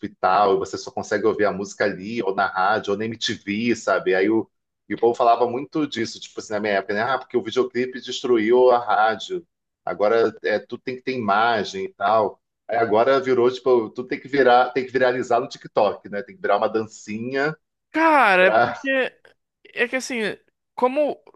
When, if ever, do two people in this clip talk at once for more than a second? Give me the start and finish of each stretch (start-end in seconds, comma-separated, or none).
none